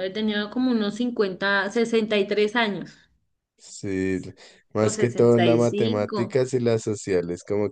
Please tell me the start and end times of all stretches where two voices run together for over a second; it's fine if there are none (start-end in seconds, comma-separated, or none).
4.8-6.4